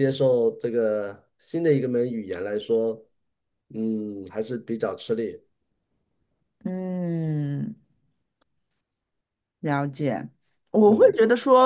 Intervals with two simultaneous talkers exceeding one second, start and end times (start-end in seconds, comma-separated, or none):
none